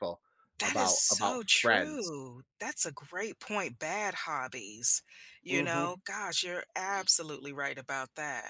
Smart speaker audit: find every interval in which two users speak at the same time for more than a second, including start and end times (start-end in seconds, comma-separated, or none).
0.6-2.1